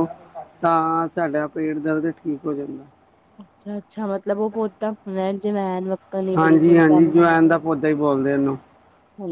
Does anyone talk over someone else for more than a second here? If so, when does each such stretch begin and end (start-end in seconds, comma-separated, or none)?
none